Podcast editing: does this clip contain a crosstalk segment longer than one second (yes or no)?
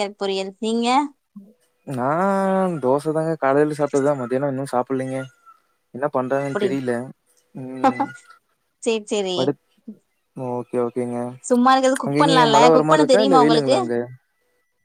yes